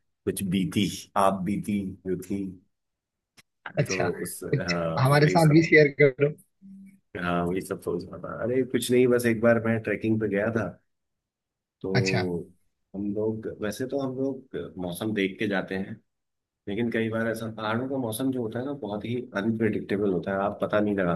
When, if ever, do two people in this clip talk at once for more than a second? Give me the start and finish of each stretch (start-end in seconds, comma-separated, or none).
3.9-5.6